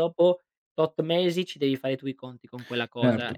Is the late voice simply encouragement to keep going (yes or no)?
no